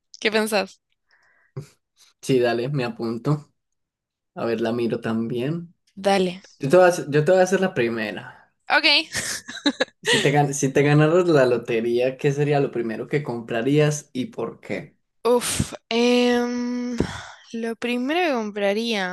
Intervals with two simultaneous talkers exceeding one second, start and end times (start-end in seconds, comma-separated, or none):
none